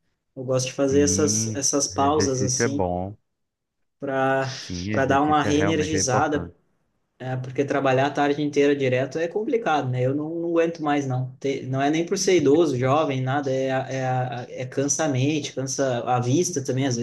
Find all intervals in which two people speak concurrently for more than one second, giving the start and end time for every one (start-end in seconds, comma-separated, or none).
0.8-2.9, 4.9-6.5